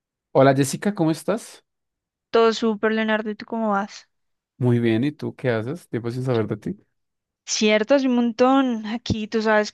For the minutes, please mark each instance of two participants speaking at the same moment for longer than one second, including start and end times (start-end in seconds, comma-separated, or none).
none